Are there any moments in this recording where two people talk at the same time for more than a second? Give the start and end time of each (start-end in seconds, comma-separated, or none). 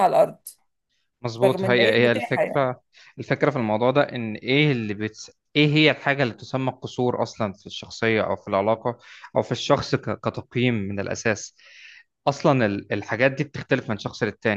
1.4-2.7